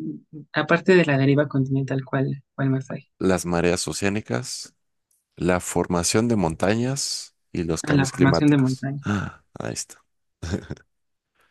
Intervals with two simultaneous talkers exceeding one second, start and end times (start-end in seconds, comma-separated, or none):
7.8-9.1